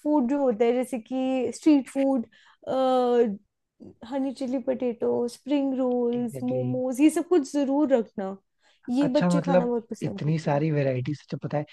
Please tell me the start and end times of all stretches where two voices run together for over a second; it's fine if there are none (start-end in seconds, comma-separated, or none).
9.0-10.7